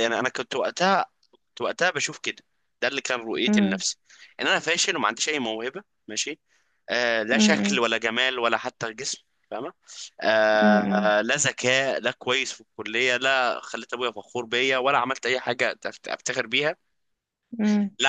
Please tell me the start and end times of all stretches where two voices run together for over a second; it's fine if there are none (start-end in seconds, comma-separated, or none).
none